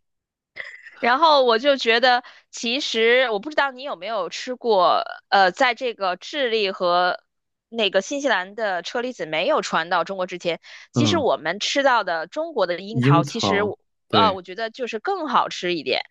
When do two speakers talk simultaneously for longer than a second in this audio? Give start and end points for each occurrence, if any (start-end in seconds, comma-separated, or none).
12.9-14.4